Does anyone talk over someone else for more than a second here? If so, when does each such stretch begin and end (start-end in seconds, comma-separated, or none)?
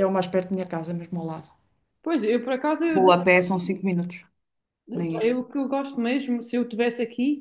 none